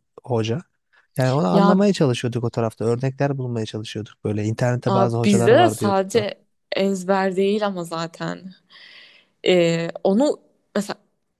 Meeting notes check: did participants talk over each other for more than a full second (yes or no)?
yes